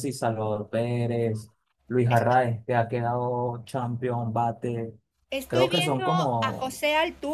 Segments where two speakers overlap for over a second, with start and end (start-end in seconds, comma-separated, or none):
5.5-6.8